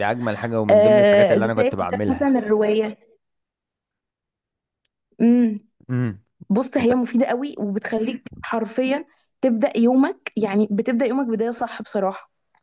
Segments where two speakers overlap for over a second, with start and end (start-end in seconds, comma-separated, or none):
0.7-2.3